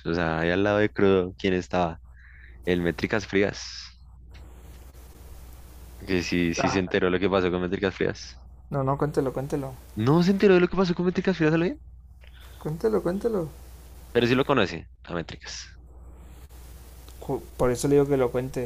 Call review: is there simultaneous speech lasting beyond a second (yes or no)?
no